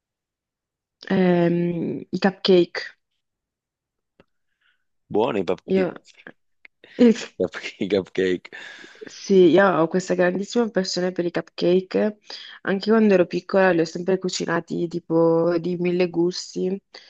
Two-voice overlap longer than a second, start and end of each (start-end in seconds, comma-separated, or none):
none